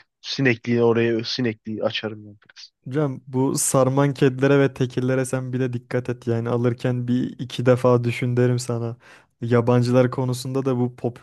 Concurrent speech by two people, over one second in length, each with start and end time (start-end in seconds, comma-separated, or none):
none